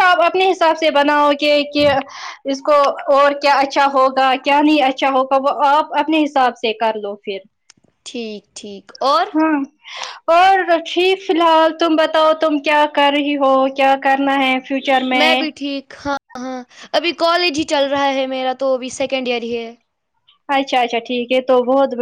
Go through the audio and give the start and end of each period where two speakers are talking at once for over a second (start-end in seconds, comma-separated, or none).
none